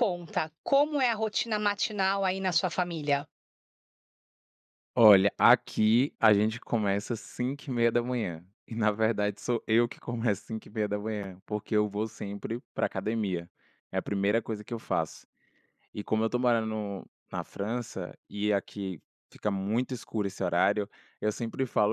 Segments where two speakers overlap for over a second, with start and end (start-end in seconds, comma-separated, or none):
none